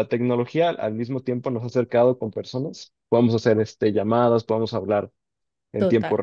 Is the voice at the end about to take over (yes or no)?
no